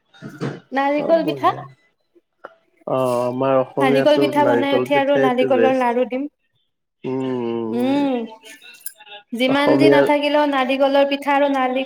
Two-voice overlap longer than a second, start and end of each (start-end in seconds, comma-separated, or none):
3.8-5.9